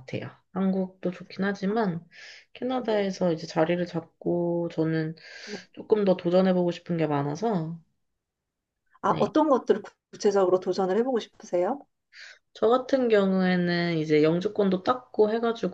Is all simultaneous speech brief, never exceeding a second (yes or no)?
yes